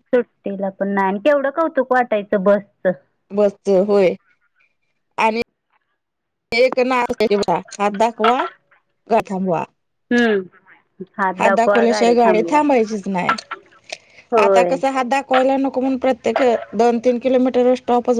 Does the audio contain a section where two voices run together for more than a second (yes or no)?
no